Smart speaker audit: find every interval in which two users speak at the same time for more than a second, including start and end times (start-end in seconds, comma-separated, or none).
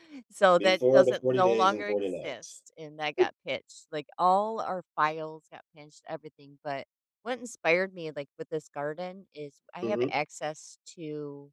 0.6-2.6